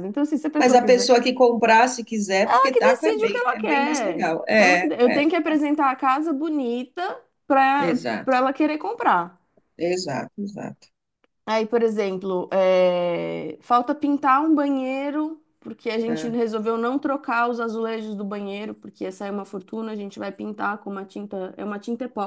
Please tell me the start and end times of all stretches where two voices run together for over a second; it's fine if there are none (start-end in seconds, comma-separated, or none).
2.4-5.3